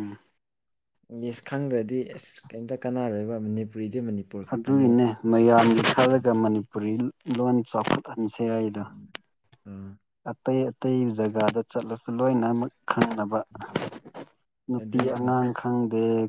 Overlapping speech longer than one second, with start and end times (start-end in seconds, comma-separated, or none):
none